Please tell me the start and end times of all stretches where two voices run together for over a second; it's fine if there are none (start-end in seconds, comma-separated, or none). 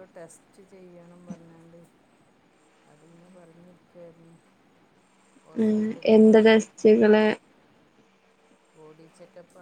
5.7-7.2